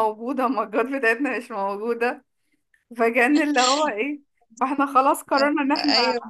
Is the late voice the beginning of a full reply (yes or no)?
no